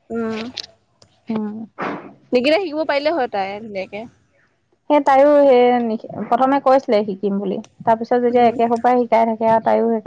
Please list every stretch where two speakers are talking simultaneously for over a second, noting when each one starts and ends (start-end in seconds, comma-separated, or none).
none